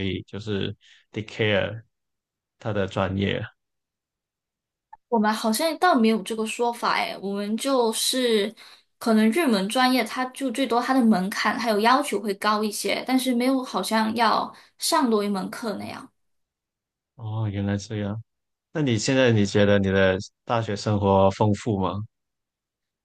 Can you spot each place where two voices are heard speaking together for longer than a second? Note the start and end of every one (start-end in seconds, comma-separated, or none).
none